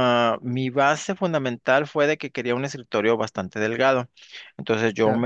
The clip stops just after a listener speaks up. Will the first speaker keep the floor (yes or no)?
yes